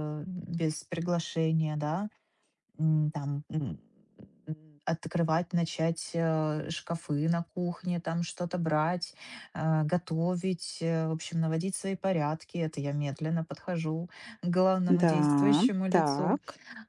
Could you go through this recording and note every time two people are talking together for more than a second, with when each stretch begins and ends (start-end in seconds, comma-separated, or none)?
15.0-16.4